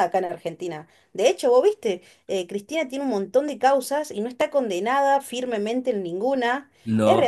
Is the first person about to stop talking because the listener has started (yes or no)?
no